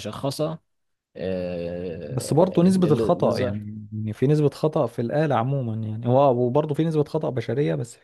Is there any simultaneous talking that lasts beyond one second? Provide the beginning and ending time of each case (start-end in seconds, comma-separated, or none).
2.0-3.6